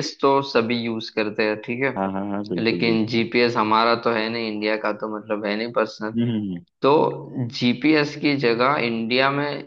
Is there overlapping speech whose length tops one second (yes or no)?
yes